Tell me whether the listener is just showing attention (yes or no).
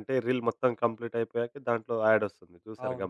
no